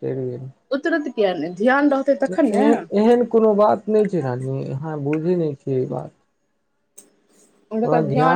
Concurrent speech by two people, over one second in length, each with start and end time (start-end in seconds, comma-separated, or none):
none